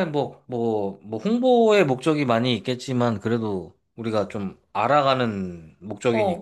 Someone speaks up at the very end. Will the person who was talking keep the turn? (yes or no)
no